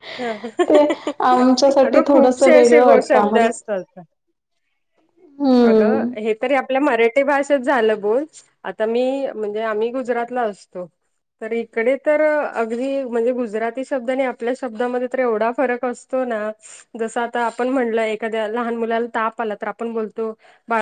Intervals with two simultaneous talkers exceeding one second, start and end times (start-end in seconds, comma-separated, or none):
1.9-3.4